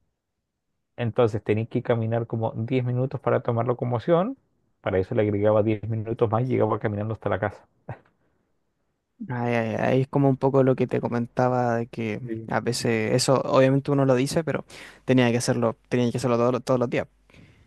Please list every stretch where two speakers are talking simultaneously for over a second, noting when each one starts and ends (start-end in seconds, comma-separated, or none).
none